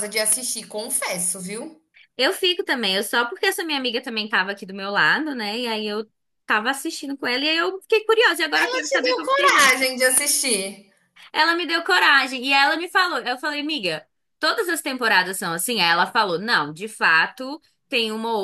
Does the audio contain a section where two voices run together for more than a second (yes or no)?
yes